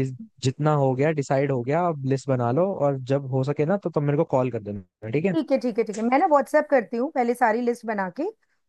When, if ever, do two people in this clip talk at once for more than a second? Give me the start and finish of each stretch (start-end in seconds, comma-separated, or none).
none